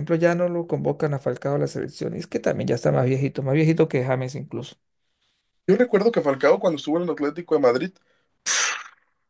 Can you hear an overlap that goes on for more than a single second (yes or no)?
no